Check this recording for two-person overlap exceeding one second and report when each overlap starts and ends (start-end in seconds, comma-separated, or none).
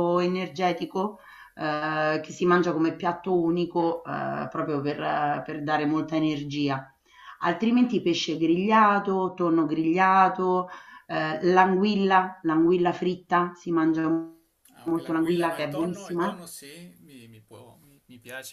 14.8-16.4